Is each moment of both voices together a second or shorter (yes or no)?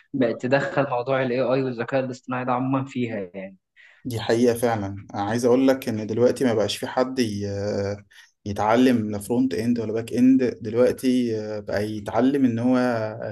yes